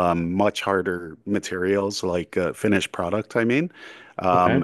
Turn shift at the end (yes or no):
no